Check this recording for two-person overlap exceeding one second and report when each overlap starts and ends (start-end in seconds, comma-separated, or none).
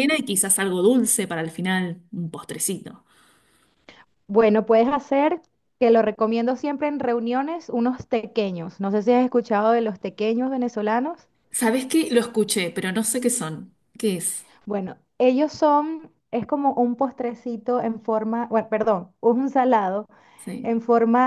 none